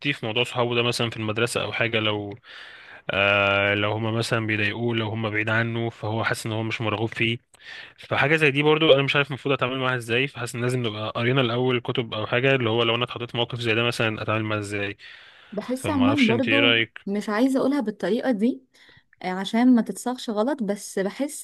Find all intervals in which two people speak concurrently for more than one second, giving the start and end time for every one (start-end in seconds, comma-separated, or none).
15.7-17.1